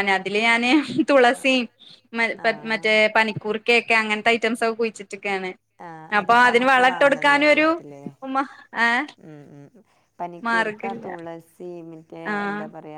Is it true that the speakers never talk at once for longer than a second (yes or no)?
yes